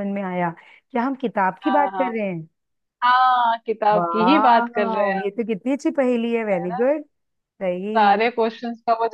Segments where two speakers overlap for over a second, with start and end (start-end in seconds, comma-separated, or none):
3.9-5.2